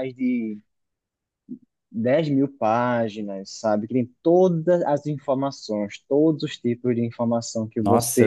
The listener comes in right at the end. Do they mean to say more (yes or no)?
yes